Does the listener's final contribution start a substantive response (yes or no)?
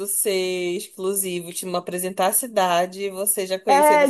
yes